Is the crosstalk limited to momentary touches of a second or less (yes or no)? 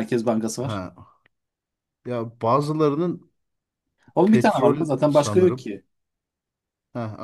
no